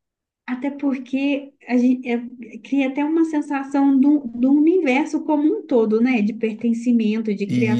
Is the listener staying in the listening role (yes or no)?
yes